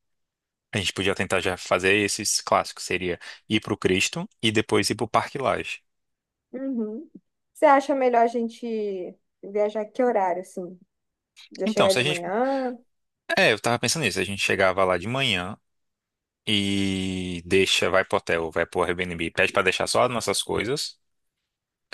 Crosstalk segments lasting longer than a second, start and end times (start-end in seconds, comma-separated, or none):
none